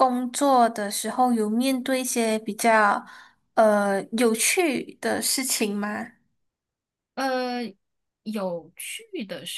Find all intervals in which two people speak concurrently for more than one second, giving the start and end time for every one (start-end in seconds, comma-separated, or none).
none